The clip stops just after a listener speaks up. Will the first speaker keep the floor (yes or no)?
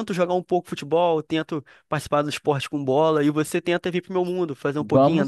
no